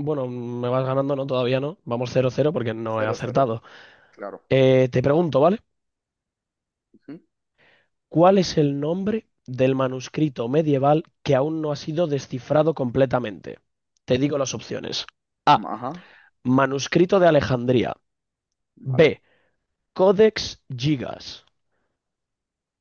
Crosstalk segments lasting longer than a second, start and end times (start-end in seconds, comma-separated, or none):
none